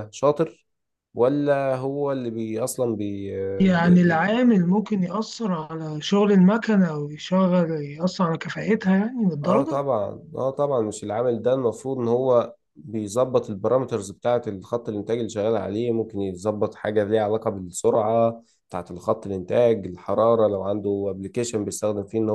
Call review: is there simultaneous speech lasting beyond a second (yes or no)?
no